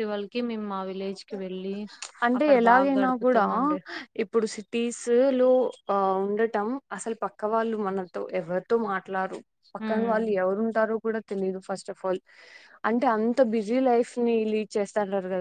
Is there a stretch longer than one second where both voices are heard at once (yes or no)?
no